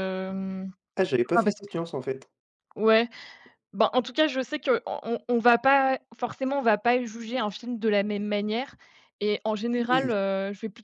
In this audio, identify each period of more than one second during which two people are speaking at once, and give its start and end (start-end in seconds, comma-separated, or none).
none